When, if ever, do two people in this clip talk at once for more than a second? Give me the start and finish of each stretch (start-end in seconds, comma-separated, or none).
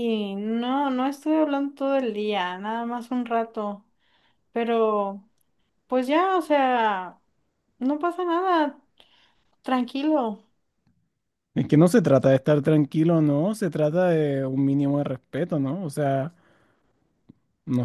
none